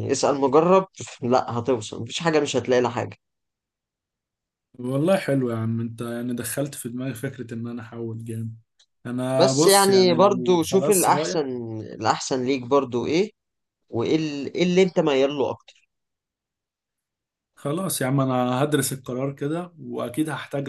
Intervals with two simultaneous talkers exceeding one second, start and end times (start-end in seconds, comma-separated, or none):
9.3-11.4